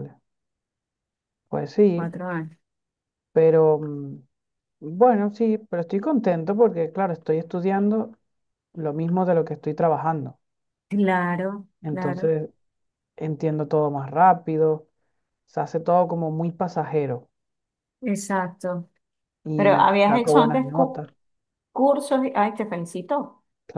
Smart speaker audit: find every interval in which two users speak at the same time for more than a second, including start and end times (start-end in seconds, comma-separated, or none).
19.5-21.0